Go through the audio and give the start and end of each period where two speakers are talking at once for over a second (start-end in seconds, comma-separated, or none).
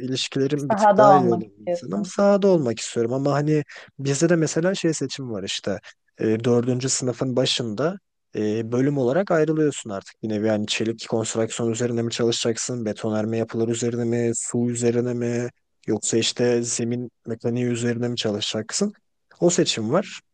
0.6-2.1